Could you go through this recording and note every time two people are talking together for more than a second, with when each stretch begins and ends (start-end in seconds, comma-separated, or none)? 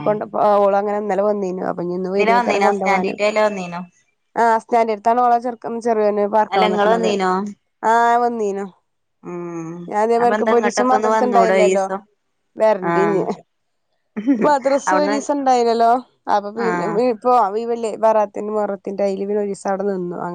10.2-11.8